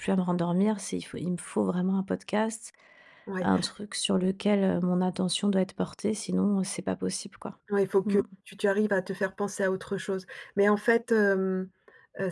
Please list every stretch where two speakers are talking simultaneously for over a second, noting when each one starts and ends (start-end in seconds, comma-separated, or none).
none